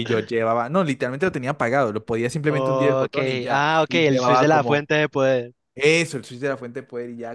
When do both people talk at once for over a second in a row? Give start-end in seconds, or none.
2.5-4.9